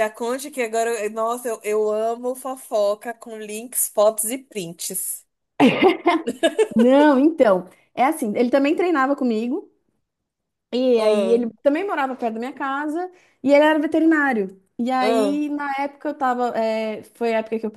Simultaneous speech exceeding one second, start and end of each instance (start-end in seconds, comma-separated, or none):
none